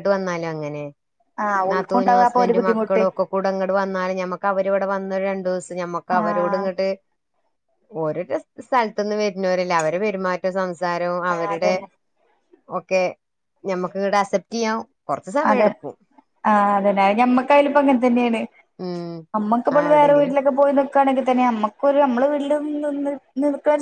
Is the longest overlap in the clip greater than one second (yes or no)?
yes